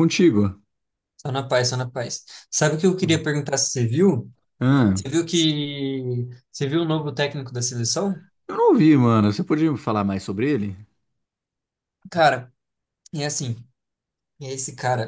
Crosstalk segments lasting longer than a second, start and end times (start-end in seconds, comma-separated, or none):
none